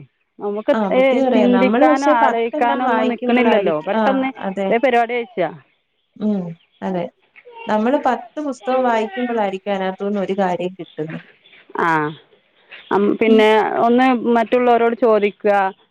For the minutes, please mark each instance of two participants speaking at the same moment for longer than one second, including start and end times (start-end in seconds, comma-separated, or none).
1.3-4.3